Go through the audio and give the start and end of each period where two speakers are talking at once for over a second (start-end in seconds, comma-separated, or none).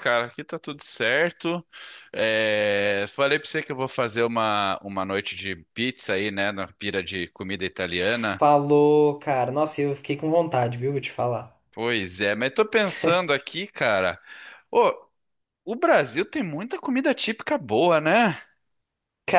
none